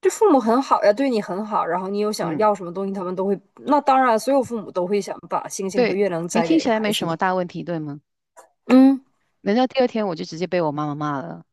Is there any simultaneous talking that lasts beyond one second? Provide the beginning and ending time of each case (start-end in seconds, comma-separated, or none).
5.7-7.2